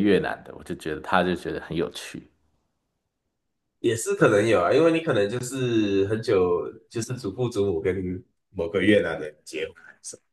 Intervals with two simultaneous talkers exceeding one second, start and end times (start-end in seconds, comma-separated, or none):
none